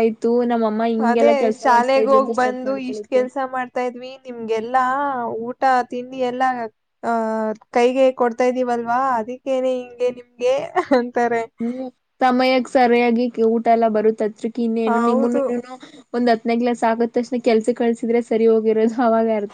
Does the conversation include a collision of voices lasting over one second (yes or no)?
yes